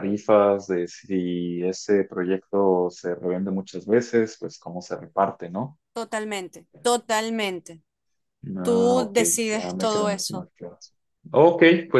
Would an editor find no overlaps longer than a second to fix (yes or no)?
no